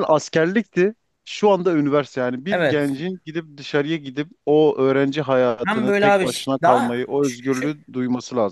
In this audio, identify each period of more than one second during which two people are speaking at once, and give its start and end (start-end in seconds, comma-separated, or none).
5.7-7.7